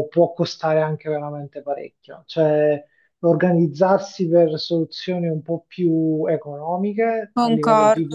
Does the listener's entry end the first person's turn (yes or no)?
no